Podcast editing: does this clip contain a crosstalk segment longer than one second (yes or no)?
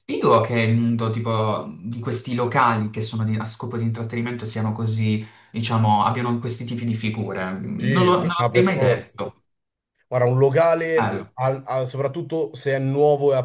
yes